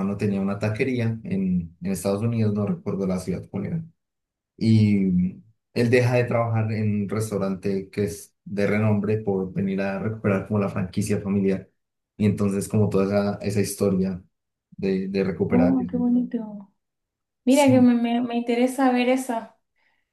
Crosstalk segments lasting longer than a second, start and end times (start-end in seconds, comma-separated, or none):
none